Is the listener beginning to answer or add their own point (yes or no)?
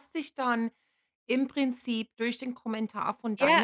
yes